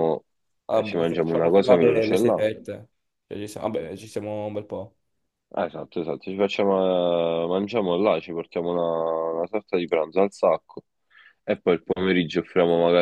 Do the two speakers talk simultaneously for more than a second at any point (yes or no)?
yes